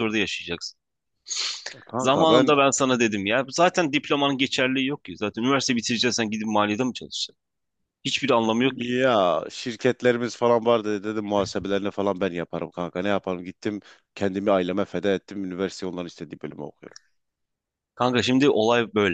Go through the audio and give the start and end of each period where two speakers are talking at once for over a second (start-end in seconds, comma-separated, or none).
none